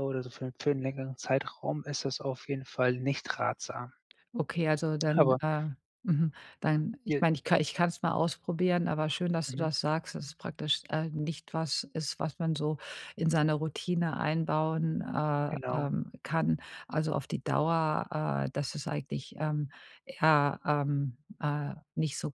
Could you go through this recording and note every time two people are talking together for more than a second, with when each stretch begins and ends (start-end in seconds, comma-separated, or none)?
none